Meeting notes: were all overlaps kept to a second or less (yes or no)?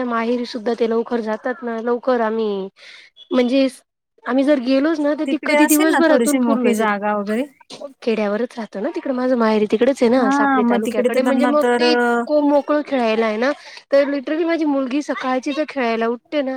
no